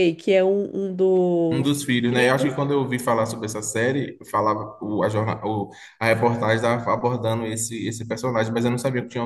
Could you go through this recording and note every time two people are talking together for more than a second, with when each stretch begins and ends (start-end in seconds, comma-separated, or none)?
none